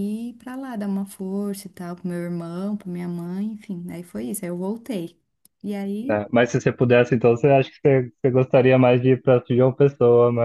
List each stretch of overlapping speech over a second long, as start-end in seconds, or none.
none